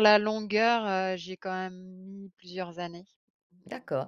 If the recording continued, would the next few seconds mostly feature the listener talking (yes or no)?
yes